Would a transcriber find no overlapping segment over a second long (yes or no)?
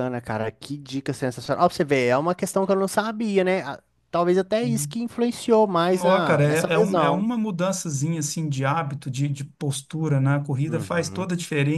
no